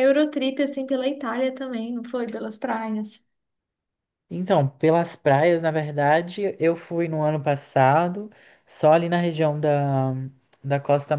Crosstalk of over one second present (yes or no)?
no